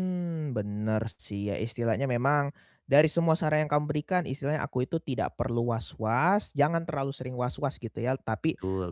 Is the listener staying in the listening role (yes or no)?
yes